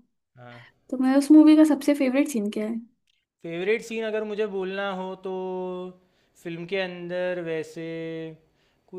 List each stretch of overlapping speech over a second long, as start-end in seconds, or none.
none